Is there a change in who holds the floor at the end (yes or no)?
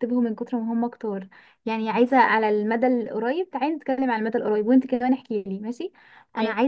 no